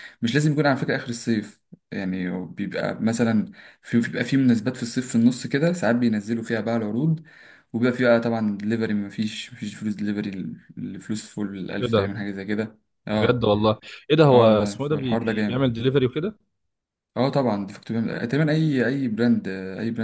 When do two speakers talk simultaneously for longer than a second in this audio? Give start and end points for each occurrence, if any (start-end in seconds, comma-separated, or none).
14.3-15.7